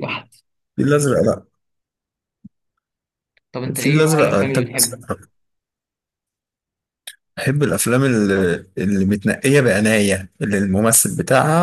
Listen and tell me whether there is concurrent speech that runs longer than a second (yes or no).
yes